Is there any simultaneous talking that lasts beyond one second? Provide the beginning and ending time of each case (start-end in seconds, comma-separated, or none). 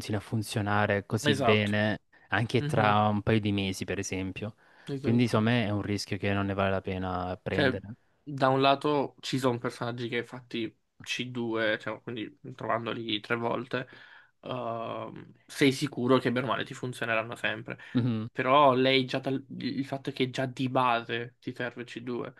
none